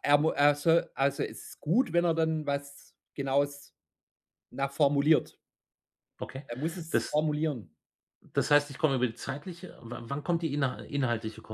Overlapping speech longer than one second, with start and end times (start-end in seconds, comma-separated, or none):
none